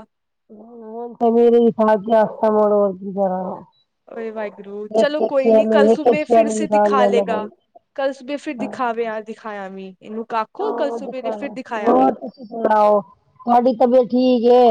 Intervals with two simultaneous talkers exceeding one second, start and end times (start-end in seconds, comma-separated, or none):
5.9-7.5